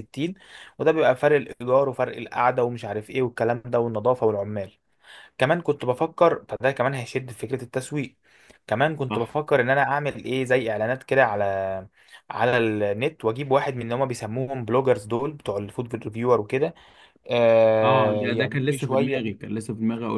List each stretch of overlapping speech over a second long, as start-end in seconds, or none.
17.8-19.4